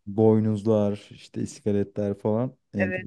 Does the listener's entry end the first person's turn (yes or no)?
yes